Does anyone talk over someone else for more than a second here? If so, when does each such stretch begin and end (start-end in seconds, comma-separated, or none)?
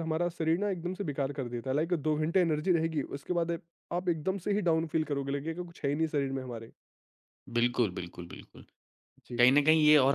none